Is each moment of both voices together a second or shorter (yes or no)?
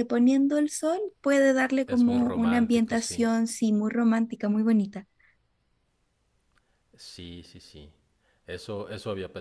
no